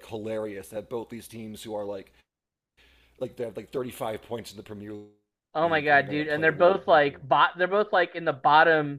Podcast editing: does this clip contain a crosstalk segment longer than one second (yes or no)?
yes